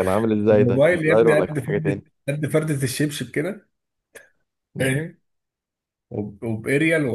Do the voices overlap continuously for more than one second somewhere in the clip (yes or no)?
yes